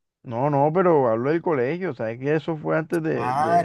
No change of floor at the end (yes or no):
no